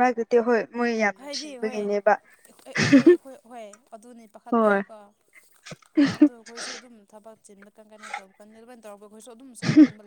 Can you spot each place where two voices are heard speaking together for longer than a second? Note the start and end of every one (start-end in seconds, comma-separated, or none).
none